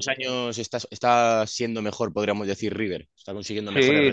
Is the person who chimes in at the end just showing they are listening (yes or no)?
no